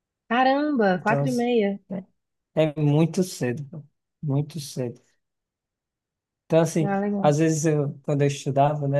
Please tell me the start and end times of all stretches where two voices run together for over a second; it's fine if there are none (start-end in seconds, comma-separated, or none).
none